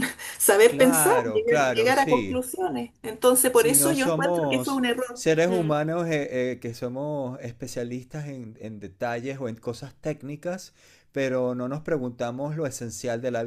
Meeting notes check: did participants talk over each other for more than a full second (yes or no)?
yes